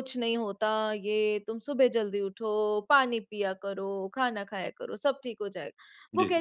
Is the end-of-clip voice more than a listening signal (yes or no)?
no